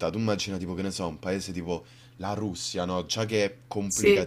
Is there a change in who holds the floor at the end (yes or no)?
no